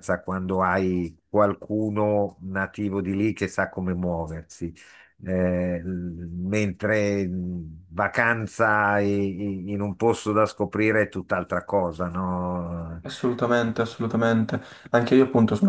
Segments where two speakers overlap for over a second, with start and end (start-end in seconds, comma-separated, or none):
none